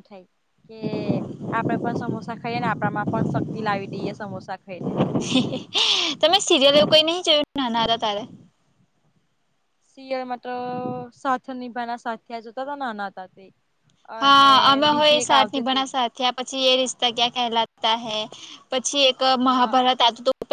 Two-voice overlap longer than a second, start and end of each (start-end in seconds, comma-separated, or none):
14.2-15.9